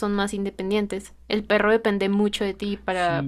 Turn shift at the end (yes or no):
no